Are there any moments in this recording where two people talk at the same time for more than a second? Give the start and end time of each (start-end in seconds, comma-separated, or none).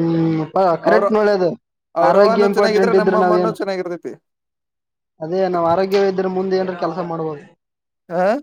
2.1-3.5